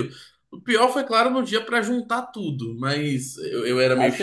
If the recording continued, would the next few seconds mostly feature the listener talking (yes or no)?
yes